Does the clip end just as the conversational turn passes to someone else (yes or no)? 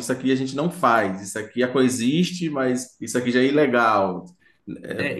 yes